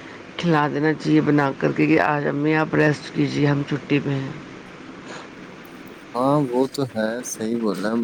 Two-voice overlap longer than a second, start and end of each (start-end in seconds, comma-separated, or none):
none